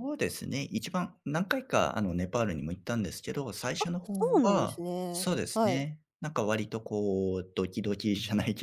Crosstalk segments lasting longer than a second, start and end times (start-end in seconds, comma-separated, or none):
3.8-5.9